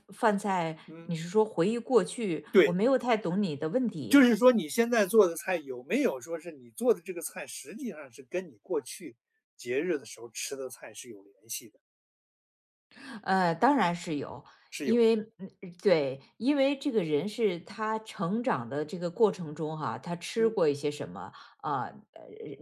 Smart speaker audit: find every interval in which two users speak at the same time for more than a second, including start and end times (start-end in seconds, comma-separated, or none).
none